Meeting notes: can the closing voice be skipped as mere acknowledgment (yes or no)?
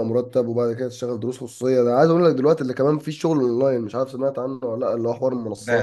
no